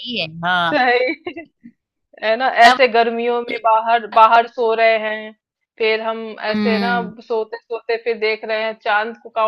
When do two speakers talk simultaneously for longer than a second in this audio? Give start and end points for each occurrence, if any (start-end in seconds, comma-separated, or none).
none